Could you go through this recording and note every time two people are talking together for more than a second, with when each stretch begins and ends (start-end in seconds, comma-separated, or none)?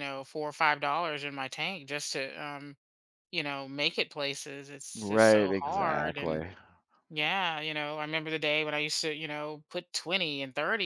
5.0-6.4